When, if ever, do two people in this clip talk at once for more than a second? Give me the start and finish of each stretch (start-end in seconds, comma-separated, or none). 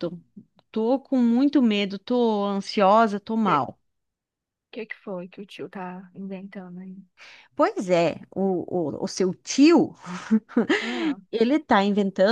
none